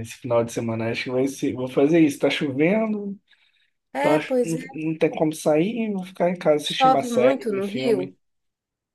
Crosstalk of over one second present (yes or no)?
yes